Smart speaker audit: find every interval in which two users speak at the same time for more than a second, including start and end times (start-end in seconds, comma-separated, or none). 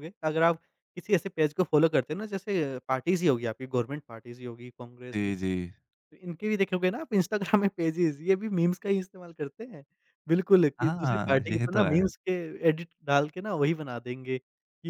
10.8-12.1